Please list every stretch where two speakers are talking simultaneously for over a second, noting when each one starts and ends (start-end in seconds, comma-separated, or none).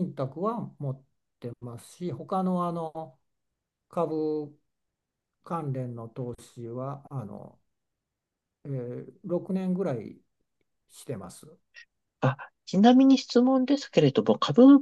none